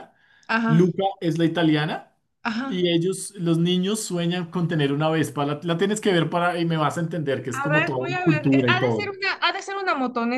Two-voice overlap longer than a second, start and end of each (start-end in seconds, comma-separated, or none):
7.5-9.1